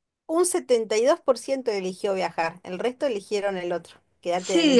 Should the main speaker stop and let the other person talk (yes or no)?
yes